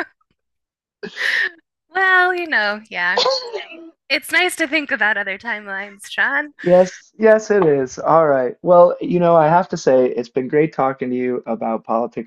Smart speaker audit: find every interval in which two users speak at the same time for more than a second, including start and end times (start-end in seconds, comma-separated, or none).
none